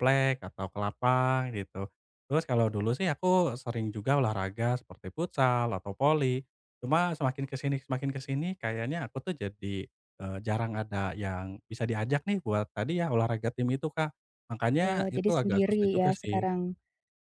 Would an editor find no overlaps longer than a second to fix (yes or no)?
no